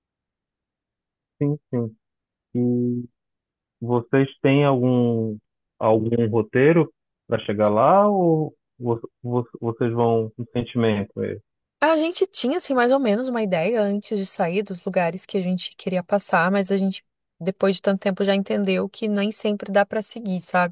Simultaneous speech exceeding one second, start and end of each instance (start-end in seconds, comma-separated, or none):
none